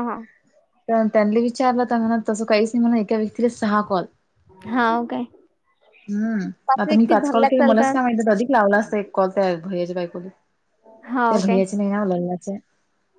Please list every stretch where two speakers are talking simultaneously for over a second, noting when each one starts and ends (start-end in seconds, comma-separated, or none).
6.9-8.1